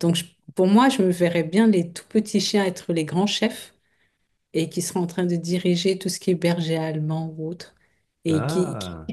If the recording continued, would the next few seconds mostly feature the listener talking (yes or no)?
no